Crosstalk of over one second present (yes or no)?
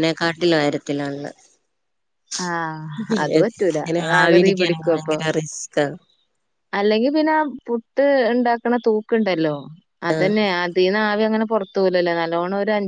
yes